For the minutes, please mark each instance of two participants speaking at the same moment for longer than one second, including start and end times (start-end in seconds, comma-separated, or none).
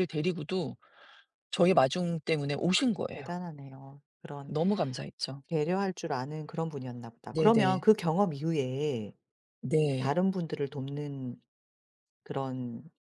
none